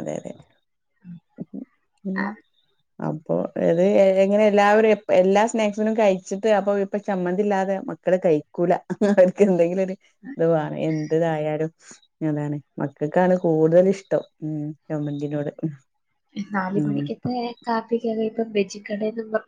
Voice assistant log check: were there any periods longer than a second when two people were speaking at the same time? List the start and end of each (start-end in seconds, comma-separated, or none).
none